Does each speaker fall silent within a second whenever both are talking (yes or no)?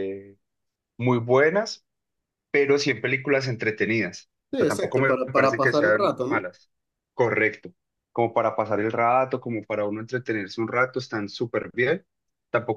no